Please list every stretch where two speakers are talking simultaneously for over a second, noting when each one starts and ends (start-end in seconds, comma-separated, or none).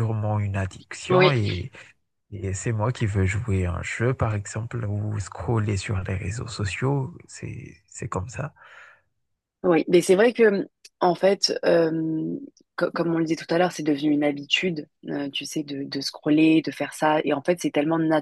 none